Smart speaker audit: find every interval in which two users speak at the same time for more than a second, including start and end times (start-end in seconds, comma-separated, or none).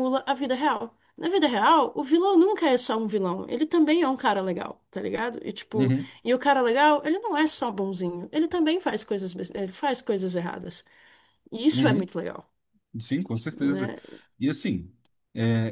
none